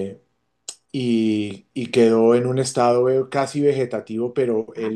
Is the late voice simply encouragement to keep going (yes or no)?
yes